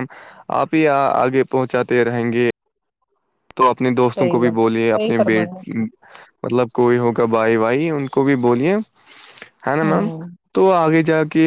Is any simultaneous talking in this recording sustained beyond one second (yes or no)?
yes